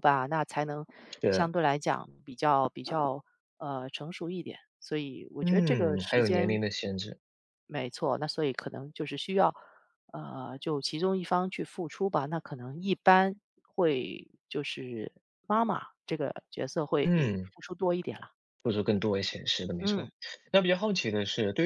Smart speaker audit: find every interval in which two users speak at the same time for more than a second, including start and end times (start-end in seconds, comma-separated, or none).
5.4-6.6